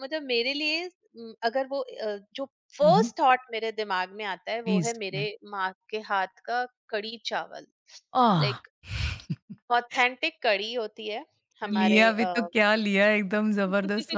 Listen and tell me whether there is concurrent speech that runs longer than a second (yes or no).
no